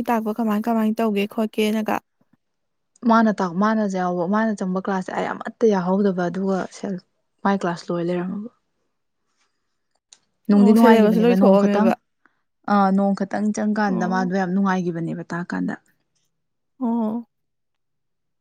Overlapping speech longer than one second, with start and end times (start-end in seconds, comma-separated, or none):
10.6-11.9